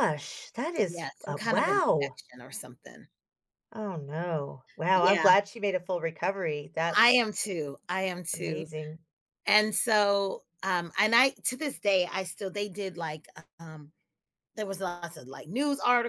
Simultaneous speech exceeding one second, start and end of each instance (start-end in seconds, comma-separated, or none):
0.8-2.2